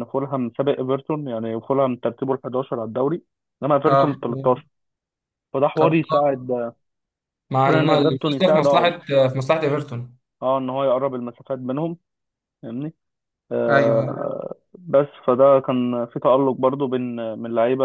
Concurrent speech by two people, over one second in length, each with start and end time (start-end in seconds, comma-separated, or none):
7.6-8.9